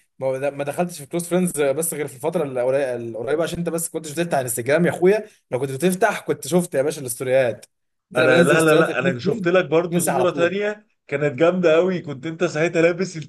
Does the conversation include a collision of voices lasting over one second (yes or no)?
yes